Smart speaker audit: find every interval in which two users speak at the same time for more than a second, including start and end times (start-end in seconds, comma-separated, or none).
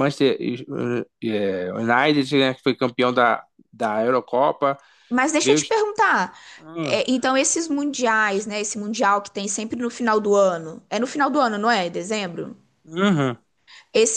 none